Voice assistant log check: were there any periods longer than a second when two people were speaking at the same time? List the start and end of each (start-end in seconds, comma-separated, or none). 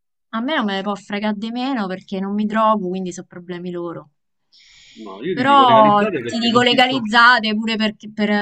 5.3-7.0